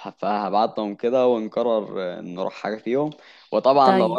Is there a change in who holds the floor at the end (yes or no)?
no